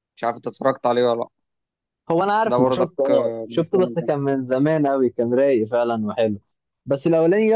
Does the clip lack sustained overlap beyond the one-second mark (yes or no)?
no